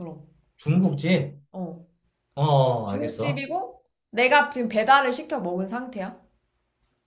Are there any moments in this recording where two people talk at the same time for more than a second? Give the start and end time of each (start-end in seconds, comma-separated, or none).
none